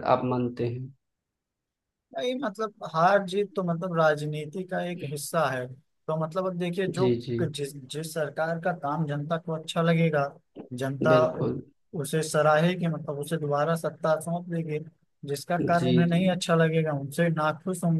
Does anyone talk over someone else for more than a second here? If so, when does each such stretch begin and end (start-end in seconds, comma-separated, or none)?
none